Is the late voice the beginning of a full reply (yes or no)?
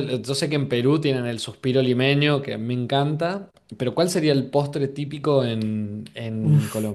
yes